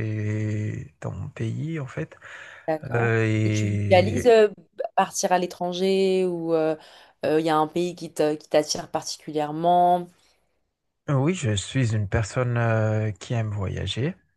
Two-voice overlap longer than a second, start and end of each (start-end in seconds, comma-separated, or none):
2.9-4.3